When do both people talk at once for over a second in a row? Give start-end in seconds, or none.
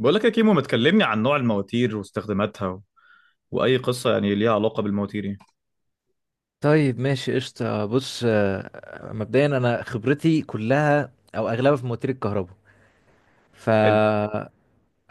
none